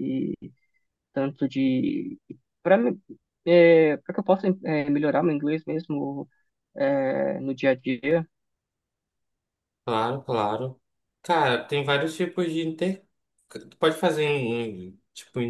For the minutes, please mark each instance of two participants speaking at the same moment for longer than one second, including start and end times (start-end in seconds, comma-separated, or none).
none